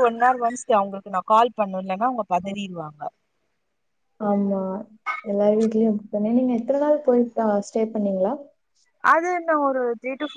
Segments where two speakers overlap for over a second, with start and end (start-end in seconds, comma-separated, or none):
none